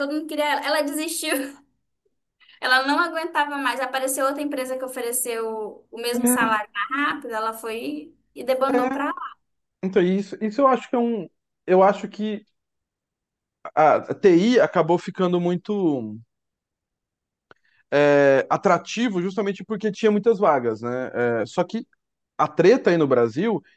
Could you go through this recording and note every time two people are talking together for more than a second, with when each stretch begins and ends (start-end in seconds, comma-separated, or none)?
none